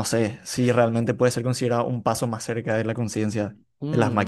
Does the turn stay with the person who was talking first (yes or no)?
no